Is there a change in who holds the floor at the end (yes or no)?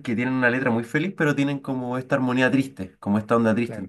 no